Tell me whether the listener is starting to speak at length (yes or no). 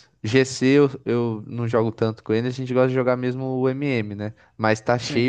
no